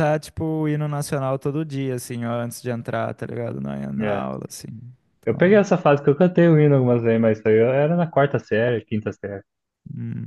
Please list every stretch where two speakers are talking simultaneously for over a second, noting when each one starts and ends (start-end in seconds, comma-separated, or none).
none